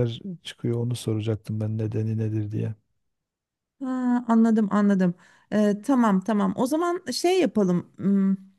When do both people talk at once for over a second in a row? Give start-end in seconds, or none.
none